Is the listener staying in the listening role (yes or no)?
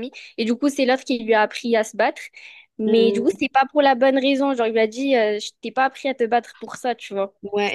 no